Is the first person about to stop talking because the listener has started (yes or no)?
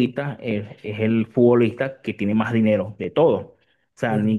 no